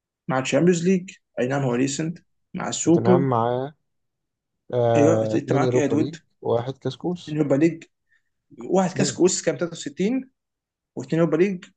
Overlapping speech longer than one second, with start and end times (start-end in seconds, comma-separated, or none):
5.0-6.2